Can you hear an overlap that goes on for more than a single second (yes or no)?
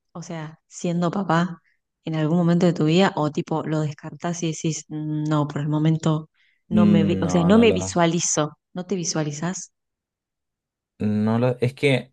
yes